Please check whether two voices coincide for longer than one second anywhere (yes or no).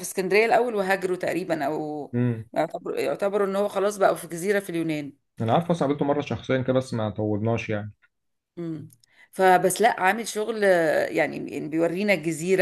no